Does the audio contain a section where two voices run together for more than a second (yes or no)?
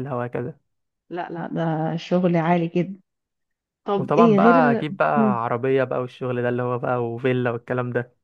yes